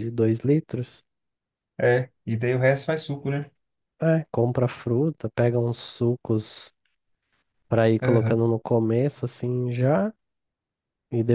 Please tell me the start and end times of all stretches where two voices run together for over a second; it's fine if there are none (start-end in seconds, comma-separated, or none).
none